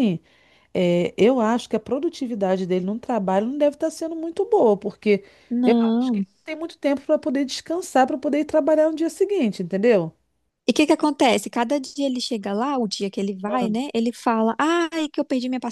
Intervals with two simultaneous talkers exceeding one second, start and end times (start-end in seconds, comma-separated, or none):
none